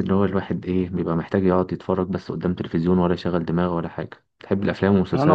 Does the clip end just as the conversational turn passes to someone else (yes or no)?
yes